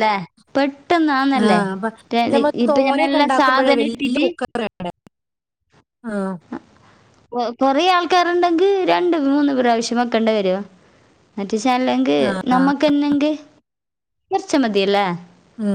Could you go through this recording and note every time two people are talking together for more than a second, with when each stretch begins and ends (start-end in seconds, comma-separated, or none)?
2.6-4.2